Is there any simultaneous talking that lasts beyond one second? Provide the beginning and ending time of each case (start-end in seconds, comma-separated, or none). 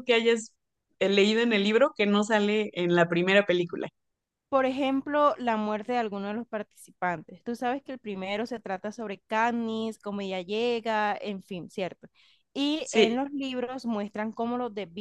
none